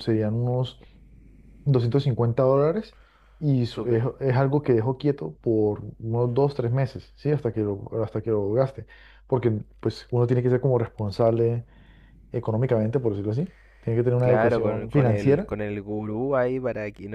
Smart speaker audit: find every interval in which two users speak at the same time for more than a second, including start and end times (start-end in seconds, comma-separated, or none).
14.2-15.5